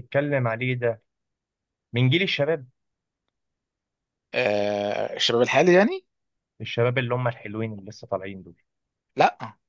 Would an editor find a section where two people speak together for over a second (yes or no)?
no